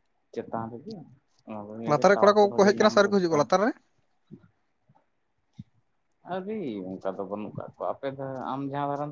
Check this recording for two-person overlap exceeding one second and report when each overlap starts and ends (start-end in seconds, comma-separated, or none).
1.8-3.6